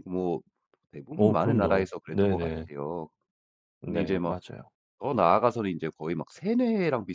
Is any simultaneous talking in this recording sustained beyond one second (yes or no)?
yes